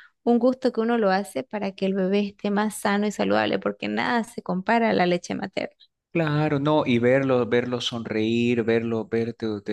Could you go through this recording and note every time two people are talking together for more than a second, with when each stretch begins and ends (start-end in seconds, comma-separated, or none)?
none